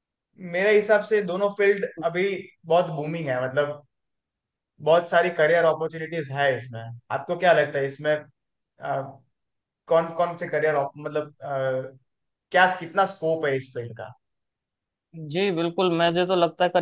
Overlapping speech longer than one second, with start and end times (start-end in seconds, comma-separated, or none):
none